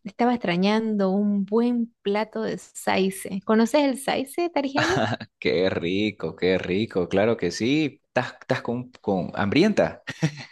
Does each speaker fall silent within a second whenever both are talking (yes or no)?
yes